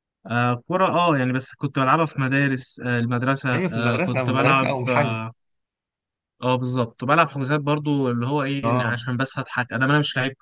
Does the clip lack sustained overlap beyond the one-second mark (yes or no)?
no